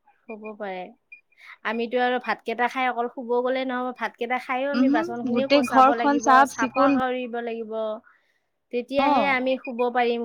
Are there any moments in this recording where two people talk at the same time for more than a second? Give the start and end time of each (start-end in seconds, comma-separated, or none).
4.8-6.9